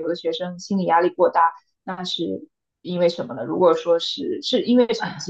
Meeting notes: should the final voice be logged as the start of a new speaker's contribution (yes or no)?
yes